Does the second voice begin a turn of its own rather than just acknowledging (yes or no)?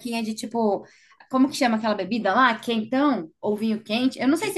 yes